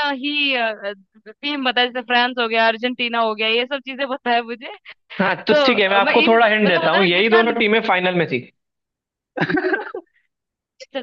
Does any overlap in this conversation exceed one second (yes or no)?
yes